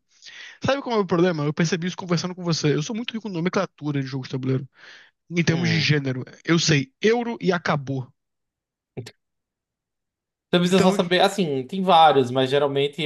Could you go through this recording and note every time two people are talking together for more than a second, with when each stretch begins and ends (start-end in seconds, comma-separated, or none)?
none